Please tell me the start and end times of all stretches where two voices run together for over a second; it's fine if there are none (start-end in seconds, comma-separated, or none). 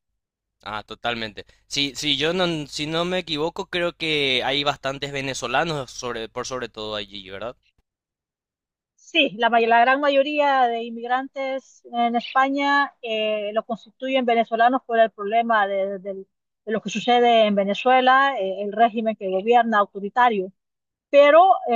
none